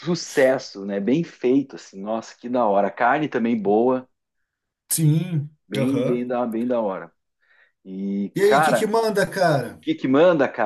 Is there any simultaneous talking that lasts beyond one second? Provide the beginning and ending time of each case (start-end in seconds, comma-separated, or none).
none